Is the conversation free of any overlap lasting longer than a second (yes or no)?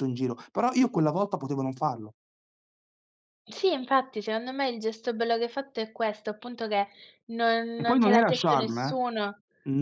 no